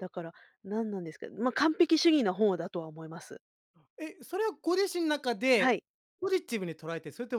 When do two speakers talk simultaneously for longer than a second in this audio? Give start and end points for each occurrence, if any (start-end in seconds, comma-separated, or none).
none